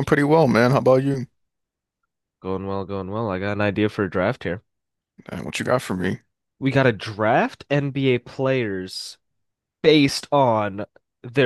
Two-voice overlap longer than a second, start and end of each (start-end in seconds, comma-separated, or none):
none